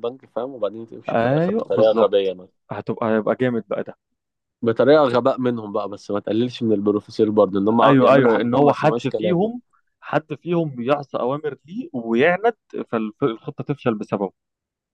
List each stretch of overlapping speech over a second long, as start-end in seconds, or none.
1.1-2.3, 7.8-9.5